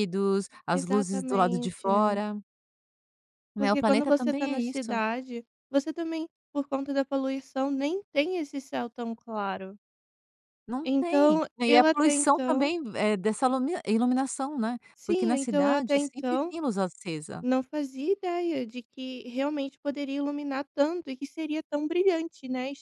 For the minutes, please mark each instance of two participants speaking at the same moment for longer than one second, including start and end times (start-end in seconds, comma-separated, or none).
0.7-2.2, 3.5-5.0, 10.9-12.7, 14.9-16.5